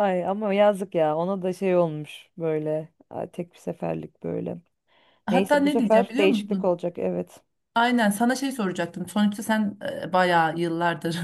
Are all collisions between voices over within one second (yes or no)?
no